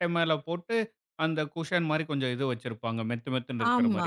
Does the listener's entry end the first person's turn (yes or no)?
yes